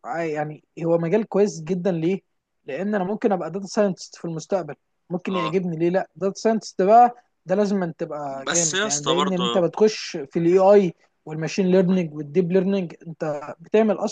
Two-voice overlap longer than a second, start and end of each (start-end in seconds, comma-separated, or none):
8.4-9.7